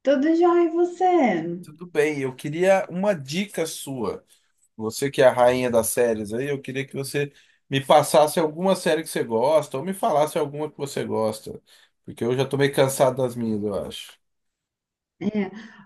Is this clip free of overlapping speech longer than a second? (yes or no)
yes